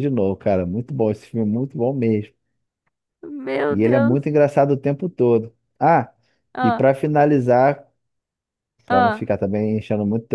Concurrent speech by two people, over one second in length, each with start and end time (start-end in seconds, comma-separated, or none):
none